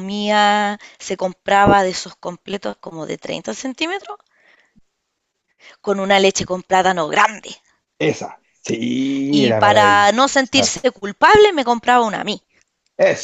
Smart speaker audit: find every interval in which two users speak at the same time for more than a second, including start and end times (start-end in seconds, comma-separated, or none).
9.3-10.8